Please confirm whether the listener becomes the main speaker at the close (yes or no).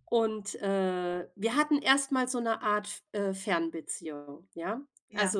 no